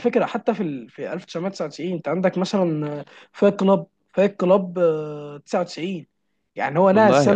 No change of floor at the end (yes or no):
yes